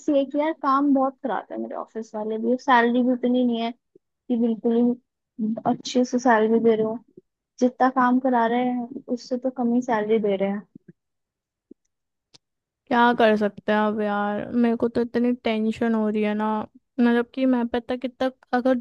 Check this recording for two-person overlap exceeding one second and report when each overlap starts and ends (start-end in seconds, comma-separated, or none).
none